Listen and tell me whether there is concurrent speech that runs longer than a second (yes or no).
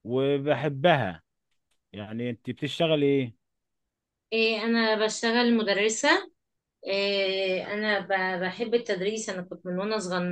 no